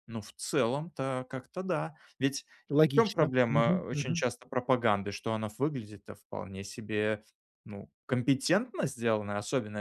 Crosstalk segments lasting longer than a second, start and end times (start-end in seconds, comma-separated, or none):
2.9-4.2